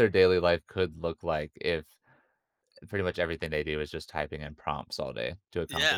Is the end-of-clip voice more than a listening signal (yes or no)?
yes